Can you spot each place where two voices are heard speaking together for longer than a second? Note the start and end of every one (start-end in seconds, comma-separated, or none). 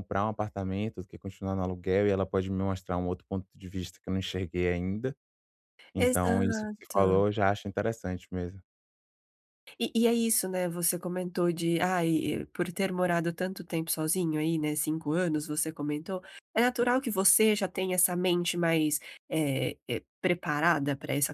6.0-7.2